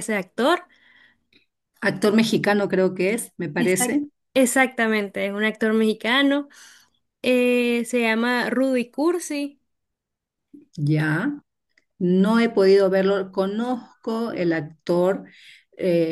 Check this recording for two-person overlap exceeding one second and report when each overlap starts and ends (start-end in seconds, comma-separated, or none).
none